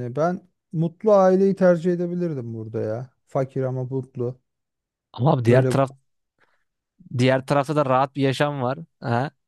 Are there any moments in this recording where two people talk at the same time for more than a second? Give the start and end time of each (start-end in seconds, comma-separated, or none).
none